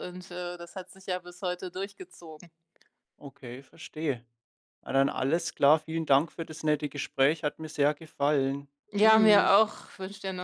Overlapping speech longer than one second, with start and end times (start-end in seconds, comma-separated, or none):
none